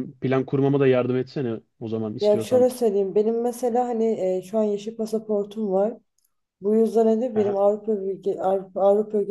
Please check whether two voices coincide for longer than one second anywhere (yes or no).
no